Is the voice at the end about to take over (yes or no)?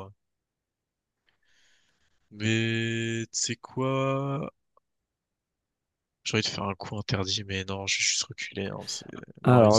yes